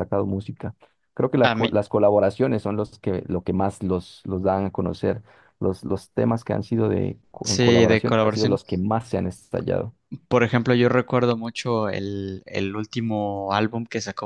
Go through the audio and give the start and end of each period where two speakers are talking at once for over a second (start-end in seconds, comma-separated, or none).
7.4-8.8